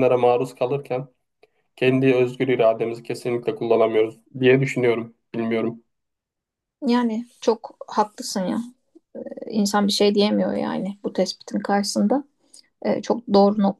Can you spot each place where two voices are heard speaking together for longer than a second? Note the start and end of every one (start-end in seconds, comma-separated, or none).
none